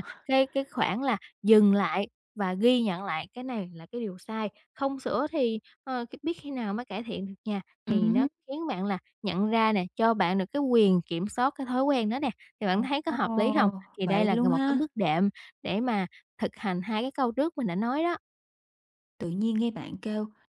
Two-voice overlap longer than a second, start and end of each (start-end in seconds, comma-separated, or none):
13.1-14.8